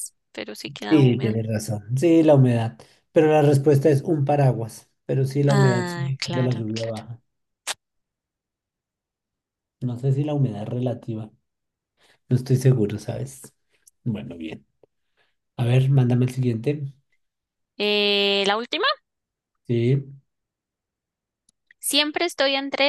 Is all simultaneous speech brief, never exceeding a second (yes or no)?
no